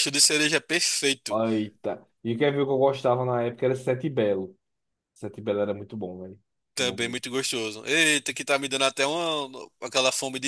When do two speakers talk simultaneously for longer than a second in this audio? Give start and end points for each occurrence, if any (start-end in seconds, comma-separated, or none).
none